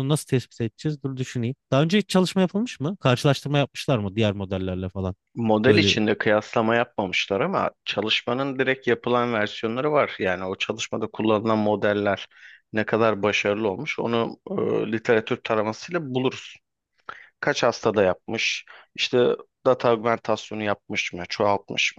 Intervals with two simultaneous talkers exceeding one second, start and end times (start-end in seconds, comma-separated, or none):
none